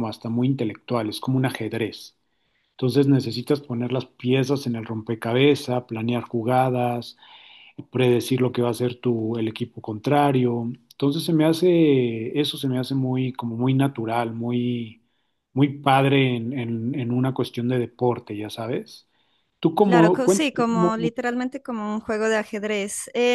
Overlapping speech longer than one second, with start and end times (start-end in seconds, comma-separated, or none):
19.8-21.1